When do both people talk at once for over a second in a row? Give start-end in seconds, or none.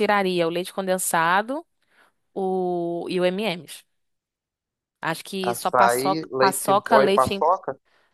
5.5-7.4